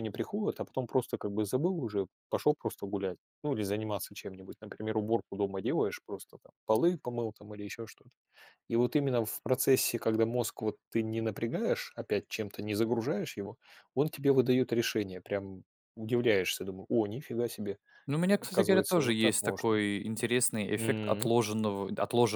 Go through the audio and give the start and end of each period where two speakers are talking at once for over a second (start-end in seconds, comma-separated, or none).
18.3-19.8